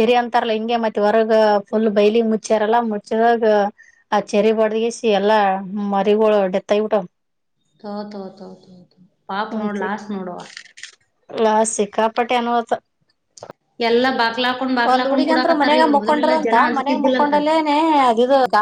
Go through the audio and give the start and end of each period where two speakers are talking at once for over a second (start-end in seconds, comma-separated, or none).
14.9-17.3